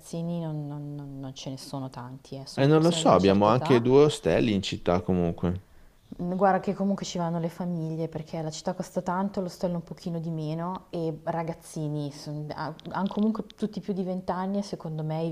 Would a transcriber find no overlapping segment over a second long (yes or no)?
no